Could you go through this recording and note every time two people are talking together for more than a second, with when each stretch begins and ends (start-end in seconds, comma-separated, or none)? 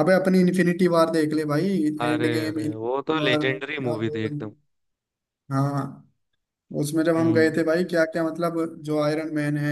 2.1-4.4